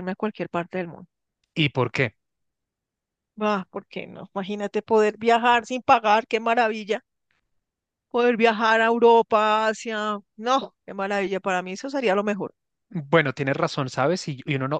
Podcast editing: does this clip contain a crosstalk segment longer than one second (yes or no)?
no